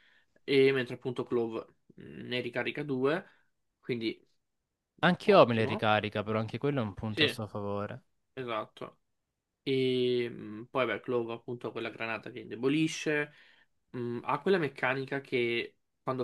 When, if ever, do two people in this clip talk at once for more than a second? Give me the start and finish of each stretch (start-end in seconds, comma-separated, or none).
none